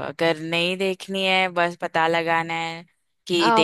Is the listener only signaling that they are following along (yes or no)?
yes